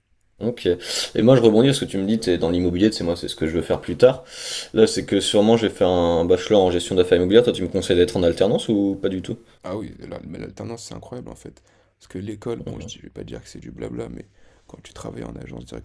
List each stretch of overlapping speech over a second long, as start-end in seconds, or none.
none